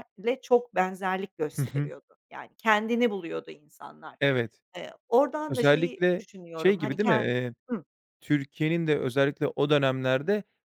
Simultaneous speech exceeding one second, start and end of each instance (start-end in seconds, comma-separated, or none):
5.5-7.3